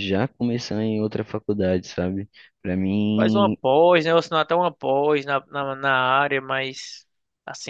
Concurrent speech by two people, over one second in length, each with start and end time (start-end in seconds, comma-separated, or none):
none